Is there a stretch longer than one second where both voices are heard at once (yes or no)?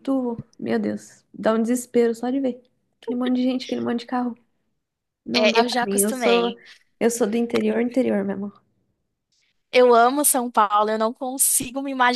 yes